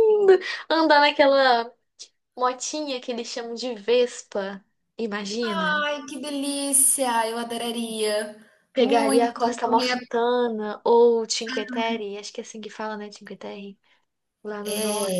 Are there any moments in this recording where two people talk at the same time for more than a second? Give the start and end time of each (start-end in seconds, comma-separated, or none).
8.8-10.0